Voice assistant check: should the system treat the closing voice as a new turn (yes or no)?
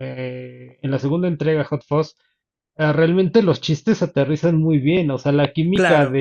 no